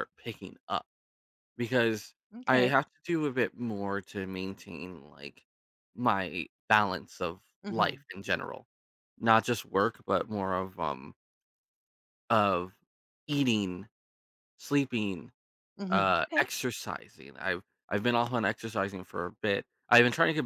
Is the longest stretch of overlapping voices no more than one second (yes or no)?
yes